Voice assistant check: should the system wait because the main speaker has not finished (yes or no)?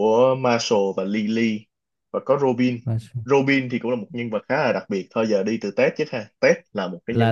no